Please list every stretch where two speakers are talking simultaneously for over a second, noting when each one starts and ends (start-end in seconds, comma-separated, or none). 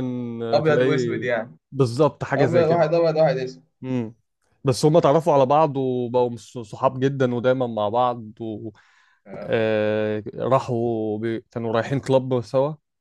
none